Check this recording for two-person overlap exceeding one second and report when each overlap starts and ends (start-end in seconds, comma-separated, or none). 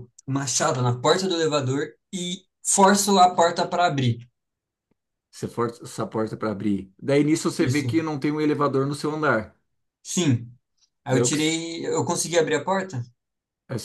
none